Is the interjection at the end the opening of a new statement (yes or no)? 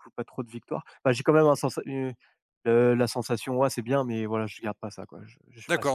yes